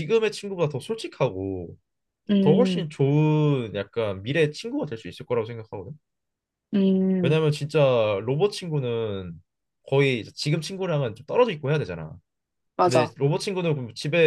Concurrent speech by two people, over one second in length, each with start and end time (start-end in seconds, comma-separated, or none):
none